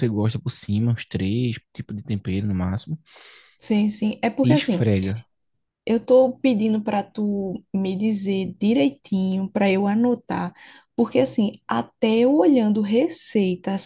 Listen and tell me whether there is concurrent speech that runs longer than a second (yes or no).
no